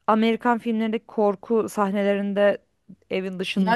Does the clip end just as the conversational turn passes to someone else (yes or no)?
yes